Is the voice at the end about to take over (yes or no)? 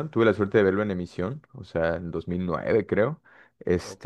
no